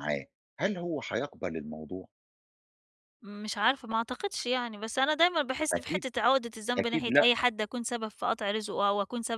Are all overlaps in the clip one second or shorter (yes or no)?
yes